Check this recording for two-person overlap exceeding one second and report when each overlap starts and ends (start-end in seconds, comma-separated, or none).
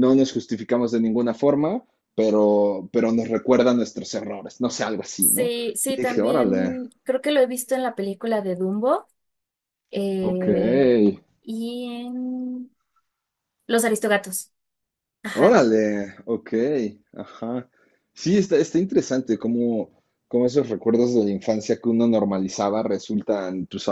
5.2-6.8